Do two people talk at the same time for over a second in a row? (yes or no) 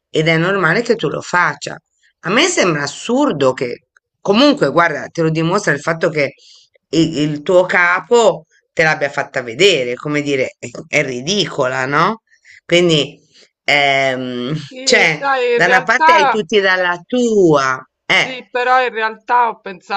yes